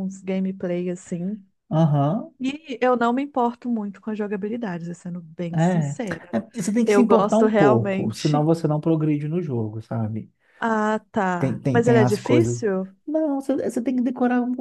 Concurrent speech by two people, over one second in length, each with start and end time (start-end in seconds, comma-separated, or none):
6.8-8.5, 11.4-12.6